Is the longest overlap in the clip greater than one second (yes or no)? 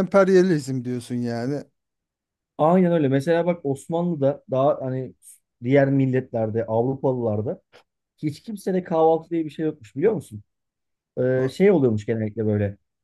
no